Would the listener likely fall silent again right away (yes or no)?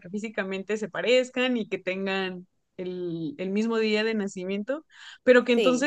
yes